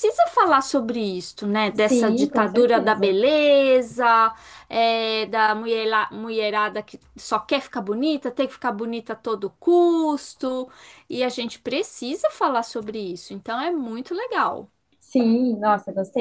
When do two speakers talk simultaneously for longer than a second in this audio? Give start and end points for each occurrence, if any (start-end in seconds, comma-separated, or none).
1.7-3.2